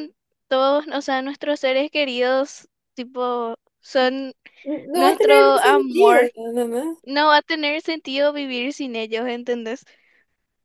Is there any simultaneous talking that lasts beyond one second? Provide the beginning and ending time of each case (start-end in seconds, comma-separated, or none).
4.9-6.3